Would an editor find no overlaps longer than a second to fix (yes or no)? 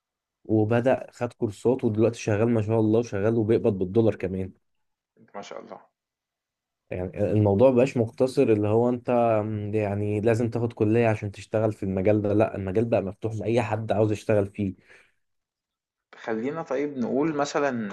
yes